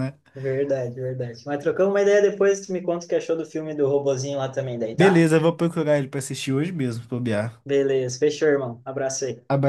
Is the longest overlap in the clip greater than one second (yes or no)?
no